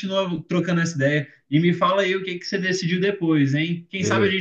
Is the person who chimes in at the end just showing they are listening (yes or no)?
yes